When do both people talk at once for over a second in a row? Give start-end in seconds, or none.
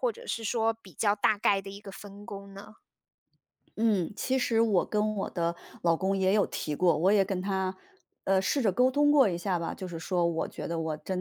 none